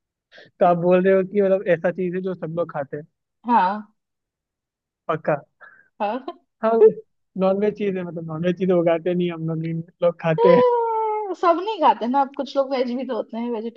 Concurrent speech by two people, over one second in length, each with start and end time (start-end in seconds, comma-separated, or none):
none